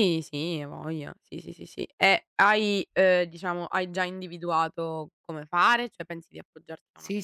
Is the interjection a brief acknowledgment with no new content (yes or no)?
no